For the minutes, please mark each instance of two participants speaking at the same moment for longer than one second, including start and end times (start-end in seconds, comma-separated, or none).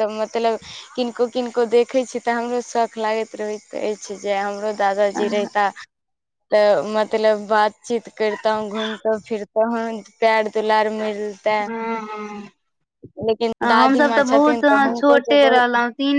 13.8-15.7